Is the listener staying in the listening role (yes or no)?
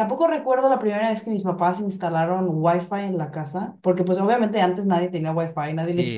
no